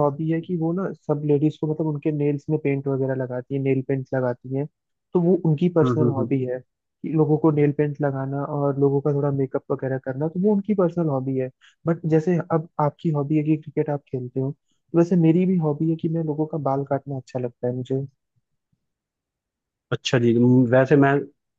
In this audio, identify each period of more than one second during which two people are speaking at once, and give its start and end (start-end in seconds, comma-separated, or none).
none